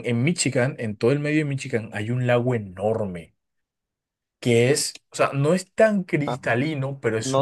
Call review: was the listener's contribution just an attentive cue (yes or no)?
no